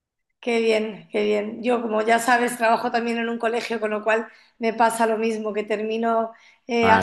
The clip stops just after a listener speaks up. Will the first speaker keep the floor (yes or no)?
yes